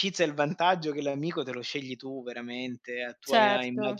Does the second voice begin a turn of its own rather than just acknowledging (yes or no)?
no